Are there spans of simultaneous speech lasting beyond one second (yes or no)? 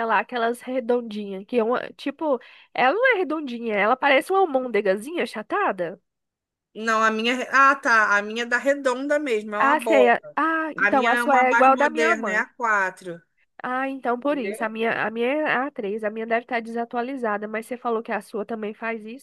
yes